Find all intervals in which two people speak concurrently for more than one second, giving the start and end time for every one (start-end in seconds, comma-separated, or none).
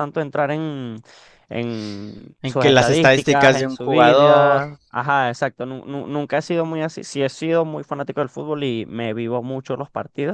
2.4-4.6